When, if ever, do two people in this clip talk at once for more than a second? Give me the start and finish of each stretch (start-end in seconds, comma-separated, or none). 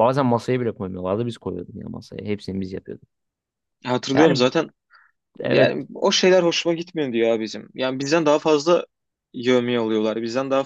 none